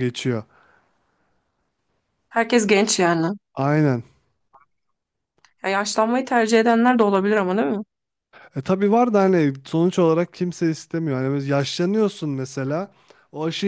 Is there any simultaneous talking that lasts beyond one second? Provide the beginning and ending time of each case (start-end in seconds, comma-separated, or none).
none